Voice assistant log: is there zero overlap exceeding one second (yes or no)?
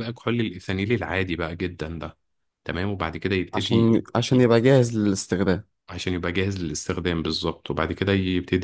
yes